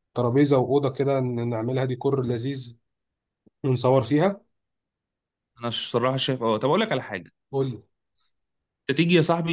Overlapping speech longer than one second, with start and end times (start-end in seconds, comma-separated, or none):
none